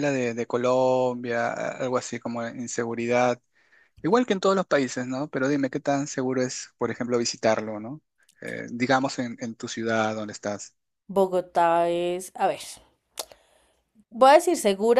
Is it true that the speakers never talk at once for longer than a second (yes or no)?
yes